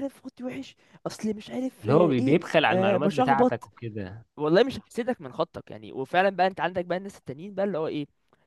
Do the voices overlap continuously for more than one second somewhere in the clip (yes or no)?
yes